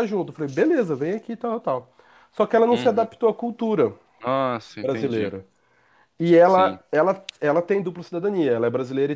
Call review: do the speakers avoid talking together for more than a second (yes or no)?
yes